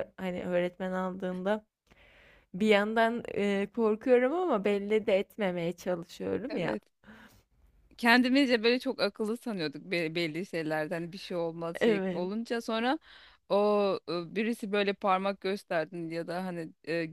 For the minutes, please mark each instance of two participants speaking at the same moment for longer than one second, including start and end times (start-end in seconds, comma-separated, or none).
none